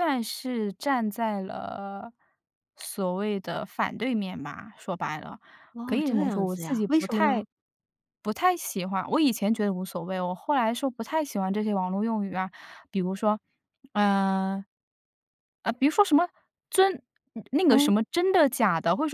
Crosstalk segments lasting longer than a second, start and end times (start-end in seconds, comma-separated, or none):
5.8-7.4